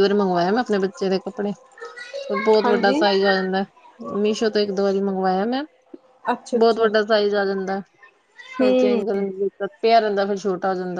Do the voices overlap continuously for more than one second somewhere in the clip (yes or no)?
no